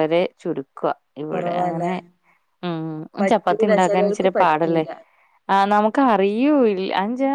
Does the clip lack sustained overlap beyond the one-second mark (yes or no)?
no